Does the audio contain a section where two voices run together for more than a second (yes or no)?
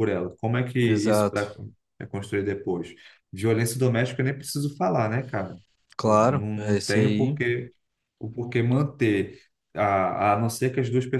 yes